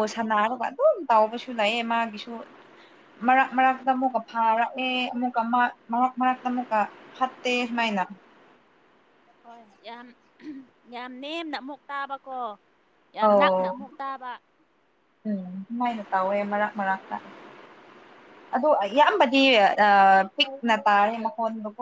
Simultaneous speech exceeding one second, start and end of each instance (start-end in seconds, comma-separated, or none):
none